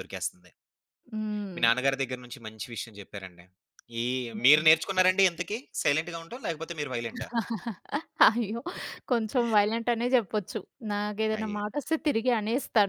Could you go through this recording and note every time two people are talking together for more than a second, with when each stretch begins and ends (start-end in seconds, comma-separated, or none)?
none